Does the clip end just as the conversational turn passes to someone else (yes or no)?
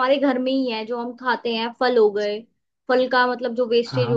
no